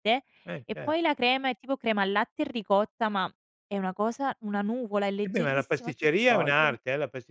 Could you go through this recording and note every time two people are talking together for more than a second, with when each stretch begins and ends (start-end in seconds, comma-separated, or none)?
5.2-6.8